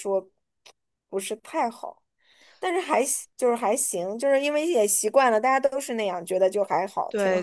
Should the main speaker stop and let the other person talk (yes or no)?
yes